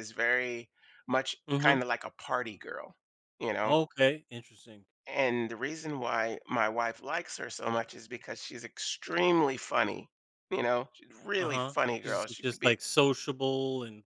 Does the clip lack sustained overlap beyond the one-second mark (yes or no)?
no